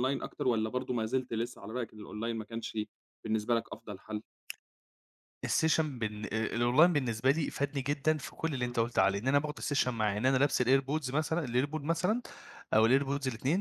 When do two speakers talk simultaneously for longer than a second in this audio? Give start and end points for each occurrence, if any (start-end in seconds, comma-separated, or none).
none